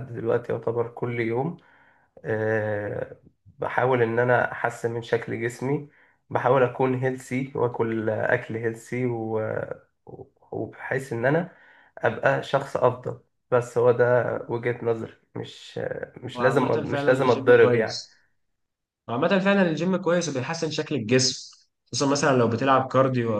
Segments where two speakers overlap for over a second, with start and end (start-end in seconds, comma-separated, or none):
16.3-18.1